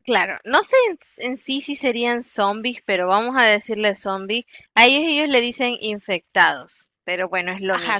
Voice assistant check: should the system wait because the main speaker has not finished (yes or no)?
no